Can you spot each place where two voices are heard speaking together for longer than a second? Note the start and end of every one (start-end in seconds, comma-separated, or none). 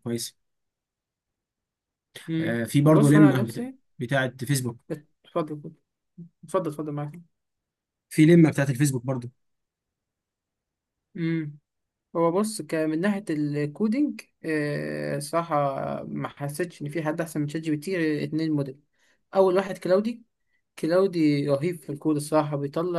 2.4-3.7